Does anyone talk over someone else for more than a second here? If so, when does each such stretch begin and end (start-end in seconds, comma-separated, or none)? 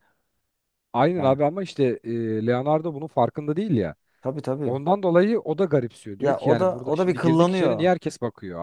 6.2-7.9